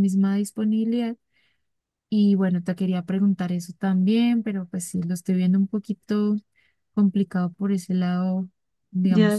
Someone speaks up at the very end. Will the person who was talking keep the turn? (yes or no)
no